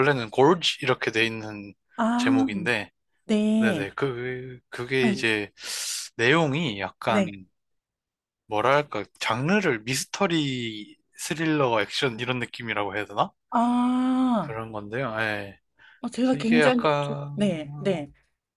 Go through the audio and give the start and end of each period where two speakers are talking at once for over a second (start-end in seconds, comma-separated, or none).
16.3-18.1